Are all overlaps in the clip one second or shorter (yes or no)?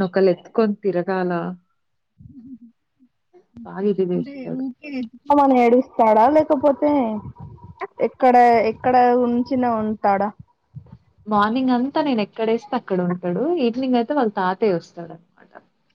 yes